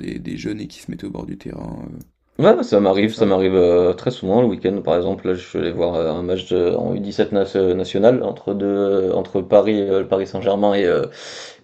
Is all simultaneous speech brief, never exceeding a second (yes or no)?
yes